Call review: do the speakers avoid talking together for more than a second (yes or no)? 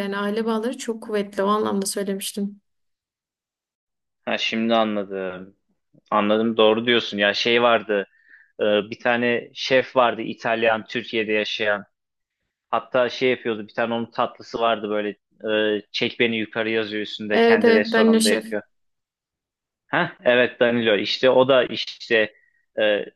no